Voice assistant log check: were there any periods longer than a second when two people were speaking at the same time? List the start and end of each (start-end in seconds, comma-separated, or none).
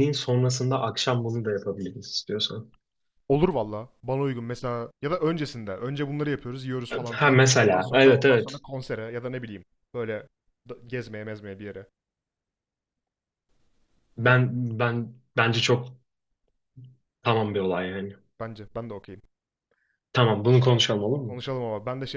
7.1-8.6